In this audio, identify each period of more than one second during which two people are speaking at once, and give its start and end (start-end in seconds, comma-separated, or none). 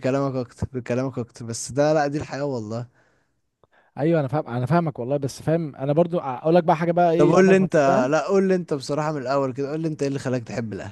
none